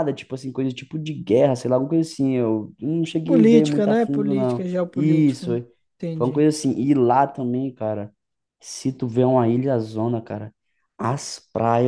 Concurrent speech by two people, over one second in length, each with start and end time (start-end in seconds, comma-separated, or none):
3.2-5.5